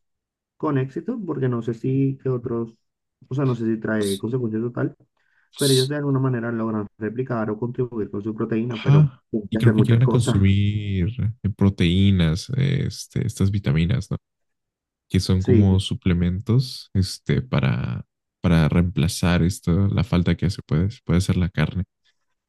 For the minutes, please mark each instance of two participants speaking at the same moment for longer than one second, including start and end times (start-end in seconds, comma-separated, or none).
8.7-10.4